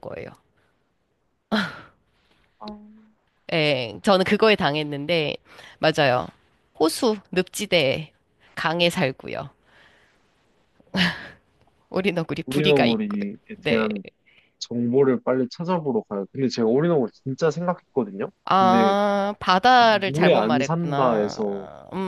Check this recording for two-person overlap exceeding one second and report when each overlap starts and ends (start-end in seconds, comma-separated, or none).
12.5-13.9, 19.8-21.4